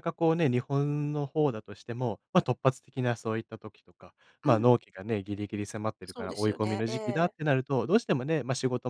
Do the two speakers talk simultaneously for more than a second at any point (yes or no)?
yes